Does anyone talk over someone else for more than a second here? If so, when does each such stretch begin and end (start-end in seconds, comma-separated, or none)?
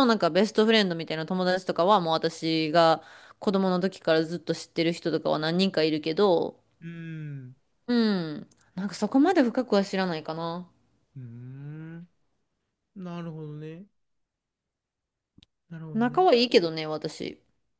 none